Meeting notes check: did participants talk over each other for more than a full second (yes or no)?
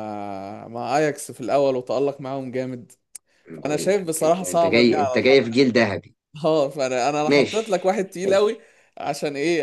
yes